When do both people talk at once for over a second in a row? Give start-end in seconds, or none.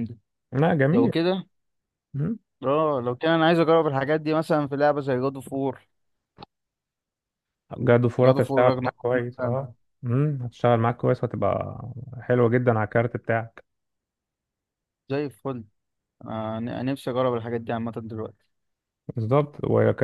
8.2-9.6